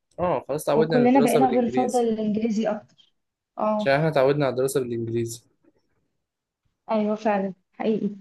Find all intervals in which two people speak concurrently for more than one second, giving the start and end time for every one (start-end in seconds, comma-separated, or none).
0.8-2.1